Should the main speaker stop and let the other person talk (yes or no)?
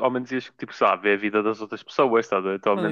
yes